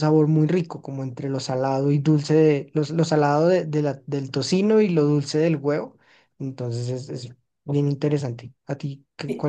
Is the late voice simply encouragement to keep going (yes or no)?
no